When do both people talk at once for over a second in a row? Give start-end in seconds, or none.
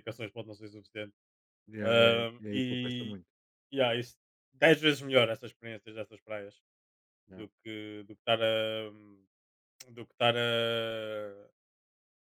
1.8-3.2